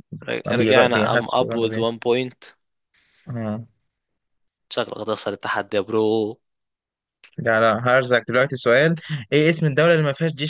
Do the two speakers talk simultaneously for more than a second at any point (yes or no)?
yes